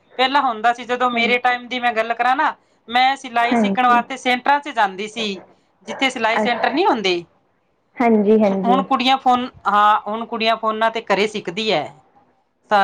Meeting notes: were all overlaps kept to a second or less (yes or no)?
yes